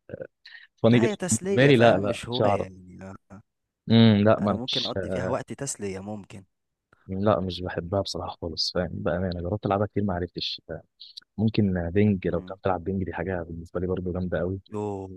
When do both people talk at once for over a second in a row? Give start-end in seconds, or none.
0.9-2.7